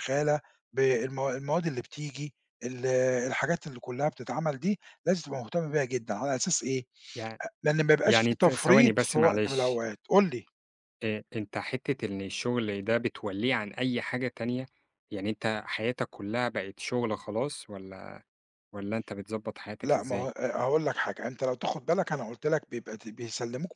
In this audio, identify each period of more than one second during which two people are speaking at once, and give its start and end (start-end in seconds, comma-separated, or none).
8.1-9.8